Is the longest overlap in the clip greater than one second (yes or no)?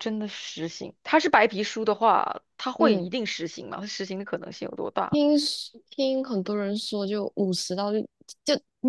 no